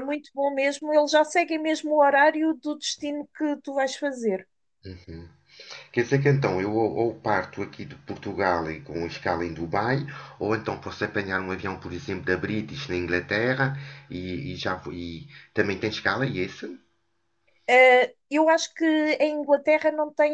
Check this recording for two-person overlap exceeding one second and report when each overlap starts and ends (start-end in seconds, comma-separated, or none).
none